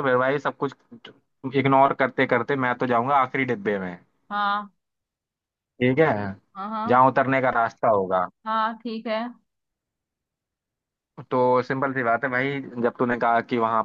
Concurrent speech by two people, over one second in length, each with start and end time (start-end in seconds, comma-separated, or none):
none